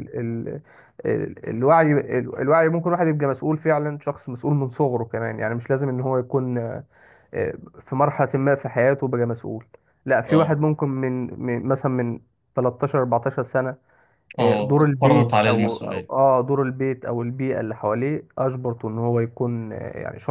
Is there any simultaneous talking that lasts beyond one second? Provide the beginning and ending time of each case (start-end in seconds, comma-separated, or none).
14.4-16.1